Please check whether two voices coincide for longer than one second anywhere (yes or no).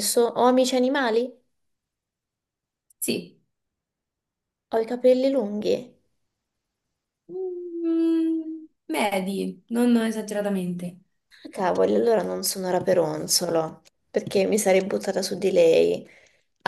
no